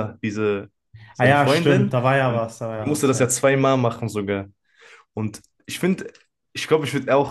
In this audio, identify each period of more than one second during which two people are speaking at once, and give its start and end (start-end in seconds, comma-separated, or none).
1.2-3.3